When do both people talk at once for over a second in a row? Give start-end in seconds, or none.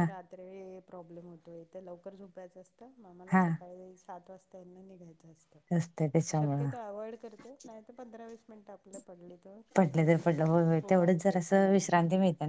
9.8-11.6